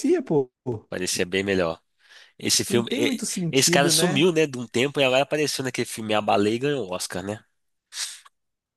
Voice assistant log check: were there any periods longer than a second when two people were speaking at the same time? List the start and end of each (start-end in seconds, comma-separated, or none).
2.7-4.3